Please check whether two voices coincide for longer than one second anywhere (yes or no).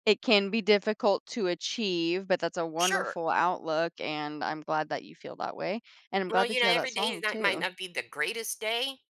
yes